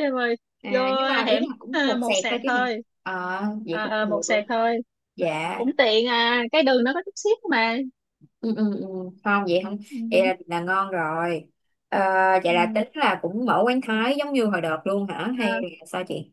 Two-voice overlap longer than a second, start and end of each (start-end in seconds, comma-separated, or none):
0.6-2.7